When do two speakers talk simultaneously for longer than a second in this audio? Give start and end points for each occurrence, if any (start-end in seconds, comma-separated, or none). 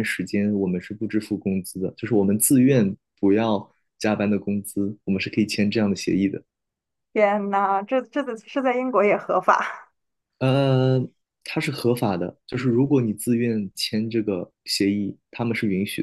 none